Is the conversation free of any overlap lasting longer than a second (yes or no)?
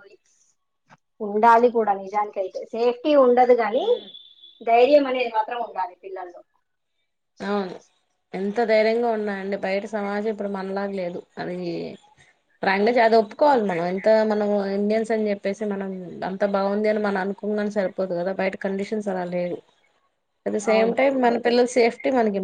yes